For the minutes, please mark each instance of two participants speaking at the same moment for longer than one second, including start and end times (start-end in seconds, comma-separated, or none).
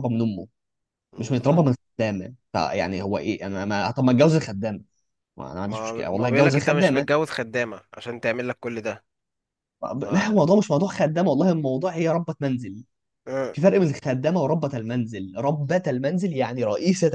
5.6-7.1